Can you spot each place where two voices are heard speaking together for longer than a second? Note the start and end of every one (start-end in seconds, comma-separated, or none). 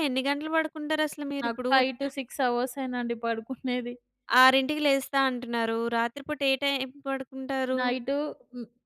none